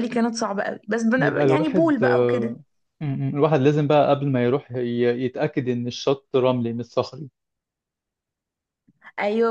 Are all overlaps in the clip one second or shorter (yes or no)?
no